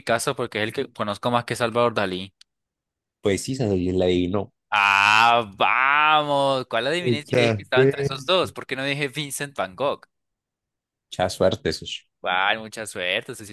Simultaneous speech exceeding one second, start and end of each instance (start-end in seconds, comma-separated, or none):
7.0-8.2